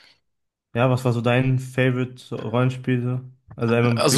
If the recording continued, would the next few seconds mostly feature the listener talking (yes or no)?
yes